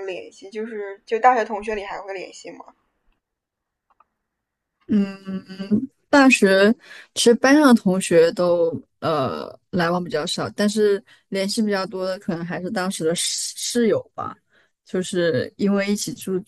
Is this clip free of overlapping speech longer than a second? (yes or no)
yes